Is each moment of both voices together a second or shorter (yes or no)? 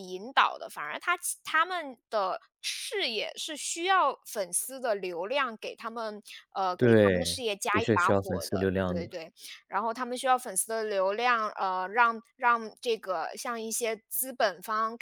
no